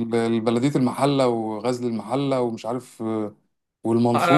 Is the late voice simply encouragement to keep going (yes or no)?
no